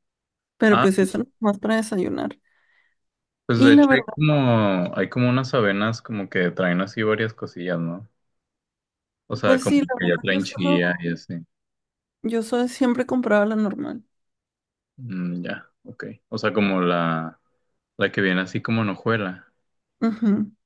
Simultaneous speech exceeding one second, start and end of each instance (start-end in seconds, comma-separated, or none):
9.4-10.8